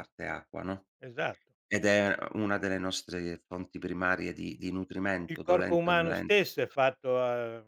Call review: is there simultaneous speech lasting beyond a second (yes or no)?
yes